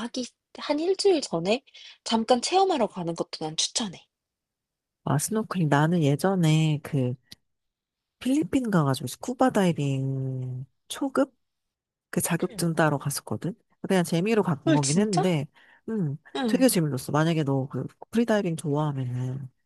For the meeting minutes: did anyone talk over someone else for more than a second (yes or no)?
no